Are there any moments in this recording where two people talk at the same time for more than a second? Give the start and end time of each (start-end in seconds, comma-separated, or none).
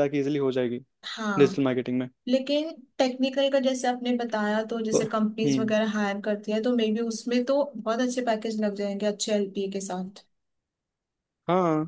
none